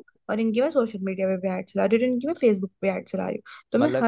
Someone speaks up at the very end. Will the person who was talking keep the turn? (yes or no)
yes